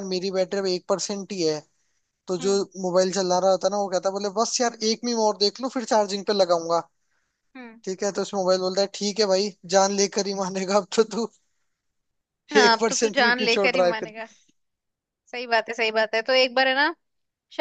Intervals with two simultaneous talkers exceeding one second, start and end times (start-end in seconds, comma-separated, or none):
12.6-14.1